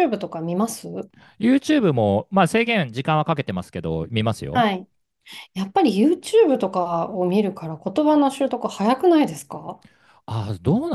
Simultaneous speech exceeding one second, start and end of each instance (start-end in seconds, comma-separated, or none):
none